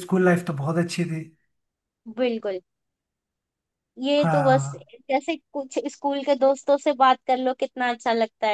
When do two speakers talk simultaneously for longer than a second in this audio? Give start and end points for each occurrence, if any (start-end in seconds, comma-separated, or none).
none